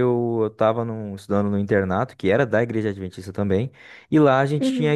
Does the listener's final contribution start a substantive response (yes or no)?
no